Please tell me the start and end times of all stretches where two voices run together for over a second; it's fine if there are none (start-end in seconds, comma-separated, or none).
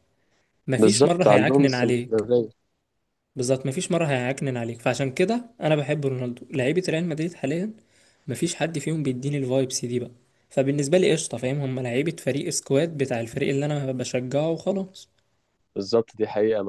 0.8-2.2